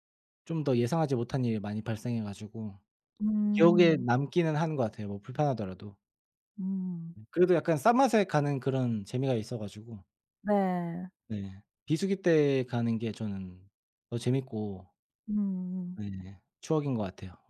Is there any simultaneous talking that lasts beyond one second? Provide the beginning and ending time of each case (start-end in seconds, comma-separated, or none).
none